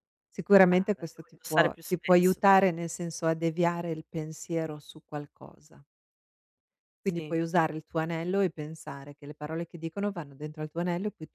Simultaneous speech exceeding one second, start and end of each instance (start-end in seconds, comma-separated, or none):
0.7-2.4